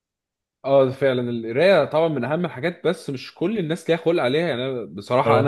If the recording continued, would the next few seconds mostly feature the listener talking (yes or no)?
no